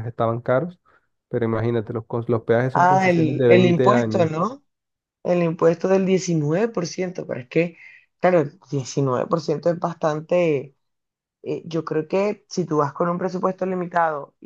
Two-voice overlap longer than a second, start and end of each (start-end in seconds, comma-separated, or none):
2.7-4.3